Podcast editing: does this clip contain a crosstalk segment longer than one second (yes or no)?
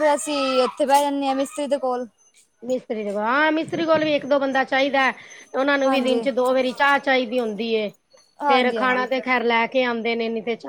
no